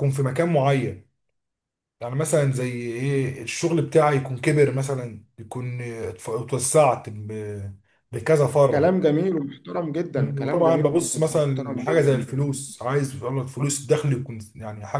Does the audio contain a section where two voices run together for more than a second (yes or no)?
yes